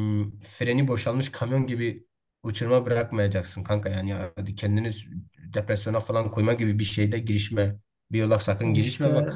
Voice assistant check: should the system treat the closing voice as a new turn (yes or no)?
no